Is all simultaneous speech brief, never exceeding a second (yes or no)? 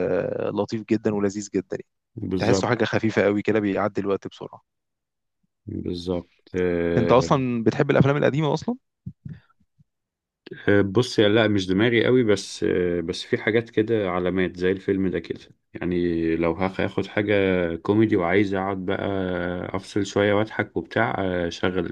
yes